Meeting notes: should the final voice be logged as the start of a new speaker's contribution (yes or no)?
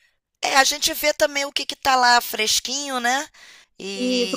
yes